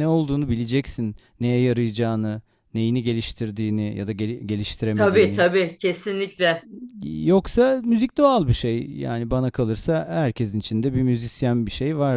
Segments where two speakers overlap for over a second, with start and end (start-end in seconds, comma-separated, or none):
none